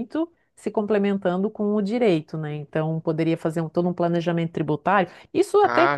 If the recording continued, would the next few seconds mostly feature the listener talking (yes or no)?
no